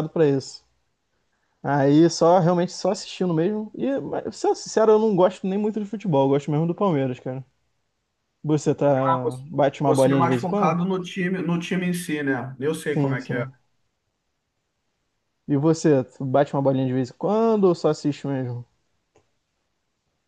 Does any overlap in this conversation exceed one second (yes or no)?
yes